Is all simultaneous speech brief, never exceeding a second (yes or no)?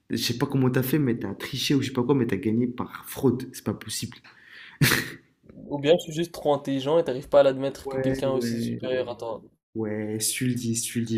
no